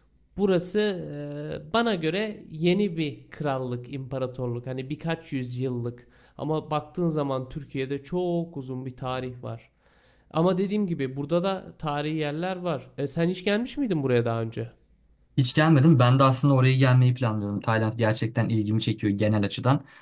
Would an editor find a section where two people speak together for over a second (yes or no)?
no